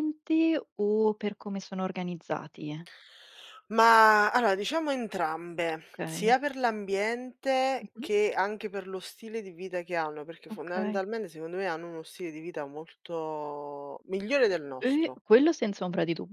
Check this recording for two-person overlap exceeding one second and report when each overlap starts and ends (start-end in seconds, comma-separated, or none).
none